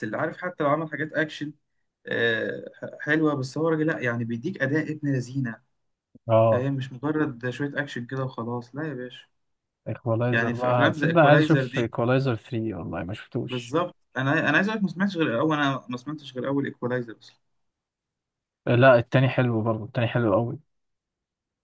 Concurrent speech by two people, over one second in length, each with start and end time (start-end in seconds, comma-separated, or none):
10.3-11.9